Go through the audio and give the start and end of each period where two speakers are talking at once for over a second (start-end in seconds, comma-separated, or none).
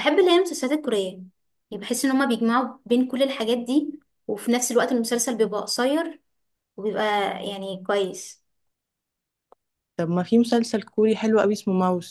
none